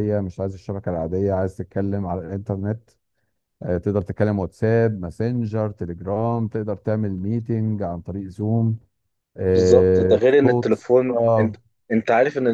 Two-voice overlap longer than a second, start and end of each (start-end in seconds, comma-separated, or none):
9.6-11.5